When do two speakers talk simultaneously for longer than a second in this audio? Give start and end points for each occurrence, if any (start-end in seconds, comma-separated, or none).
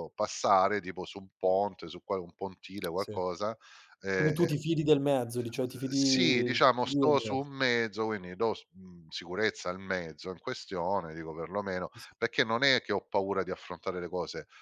5.7-7.5